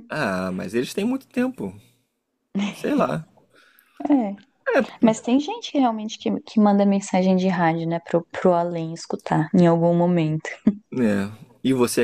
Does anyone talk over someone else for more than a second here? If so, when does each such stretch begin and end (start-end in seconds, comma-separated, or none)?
none